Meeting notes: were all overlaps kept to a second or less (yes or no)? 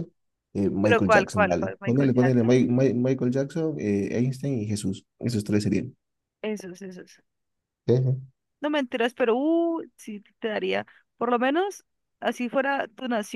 no